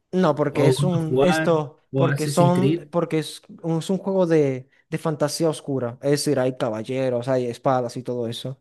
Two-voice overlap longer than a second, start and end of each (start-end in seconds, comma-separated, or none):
0.5-2.9